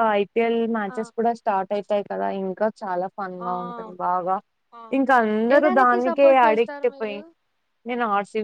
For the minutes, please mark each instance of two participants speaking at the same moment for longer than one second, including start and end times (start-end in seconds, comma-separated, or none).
5.5-7.2